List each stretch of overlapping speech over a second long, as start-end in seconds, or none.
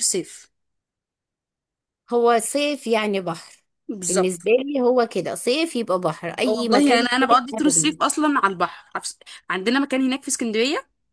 6.5-8.0